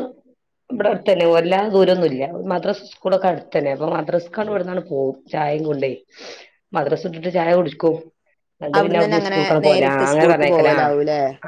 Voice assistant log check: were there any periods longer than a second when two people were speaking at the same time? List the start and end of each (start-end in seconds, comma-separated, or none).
8.8-10.7